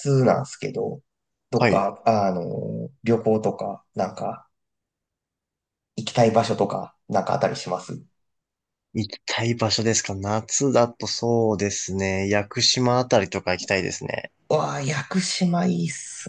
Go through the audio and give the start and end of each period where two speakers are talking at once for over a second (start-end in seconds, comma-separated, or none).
none